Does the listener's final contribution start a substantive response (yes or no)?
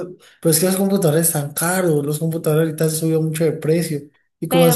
no